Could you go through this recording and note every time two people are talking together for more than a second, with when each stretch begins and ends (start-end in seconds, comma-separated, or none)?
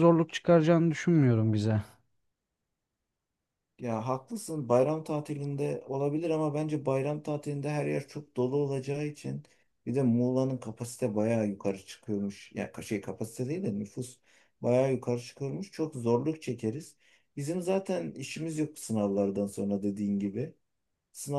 none